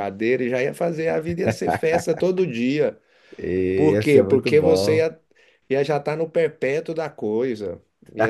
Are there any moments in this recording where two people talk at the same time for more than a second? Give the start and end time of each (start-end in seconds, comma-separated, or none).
3.8-5.1